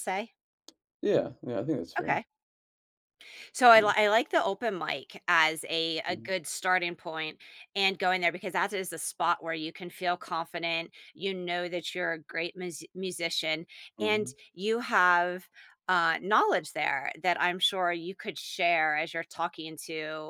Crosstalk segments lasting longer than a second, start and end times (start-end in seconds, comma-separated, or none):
none